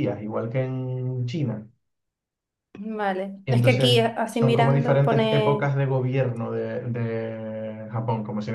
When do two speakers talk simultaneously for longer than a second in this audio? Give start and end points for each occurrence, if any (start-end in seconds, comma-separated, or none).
3.5-5.7